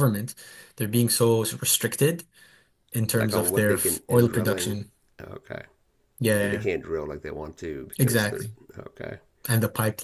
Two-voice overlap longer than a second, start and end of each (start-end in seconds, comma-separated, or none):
3.1-4.8